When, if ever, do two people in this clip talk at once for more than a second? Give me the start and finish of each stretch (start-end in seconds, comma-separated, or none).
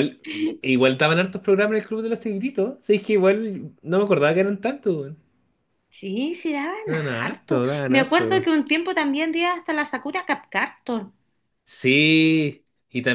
6.8-8.5